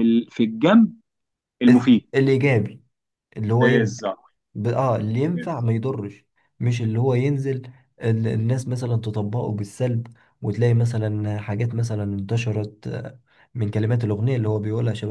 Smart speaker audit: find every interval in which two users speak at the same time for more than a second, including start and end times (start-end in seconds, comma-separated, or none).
none